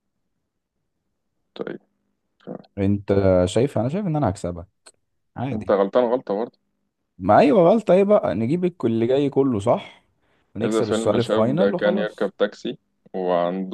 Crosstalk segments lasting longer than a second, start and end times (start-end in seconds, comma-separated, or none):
10.6-12.3